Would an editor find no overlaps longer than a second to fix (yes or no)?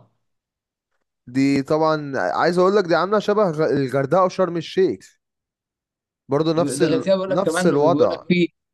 no